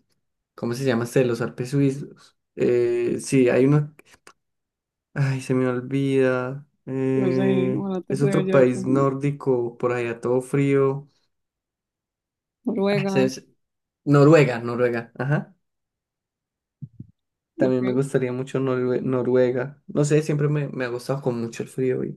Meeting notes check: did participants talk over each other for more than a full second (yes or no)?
yes